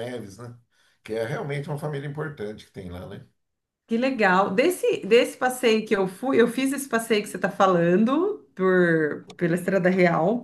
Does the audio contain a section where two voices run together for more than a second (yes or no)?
no